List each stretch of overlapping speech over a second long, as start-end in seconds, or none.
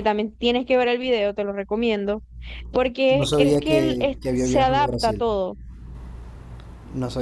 3.1-5.2